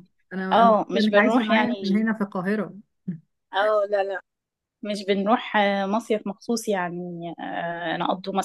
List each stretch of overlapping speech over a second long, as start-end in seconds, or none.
0.5-2.0